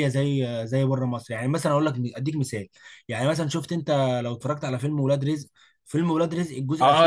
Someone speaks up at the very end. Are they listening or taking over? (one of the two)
taking over